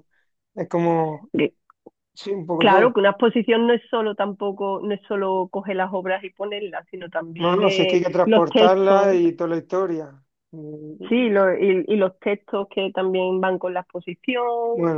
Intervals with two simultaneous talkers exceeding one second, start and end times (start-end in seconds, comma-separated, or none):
7.4-9.2